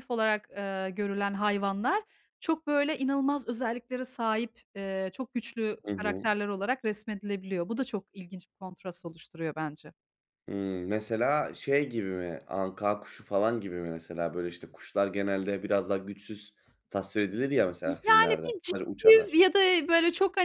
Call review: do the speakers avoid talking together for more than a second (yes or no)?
no